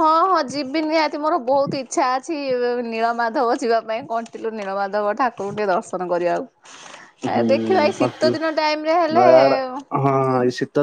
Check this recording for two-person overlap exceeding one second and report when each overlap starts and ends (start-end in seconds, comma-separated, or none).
none